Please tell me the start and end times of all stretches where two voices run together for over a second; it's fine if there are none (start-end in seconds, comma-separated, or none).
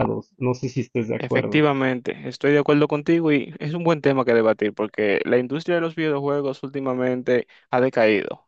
none